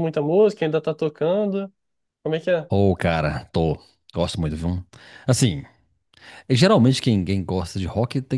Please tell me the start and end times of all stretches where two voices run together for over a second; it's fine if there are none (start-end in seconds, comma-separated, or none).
none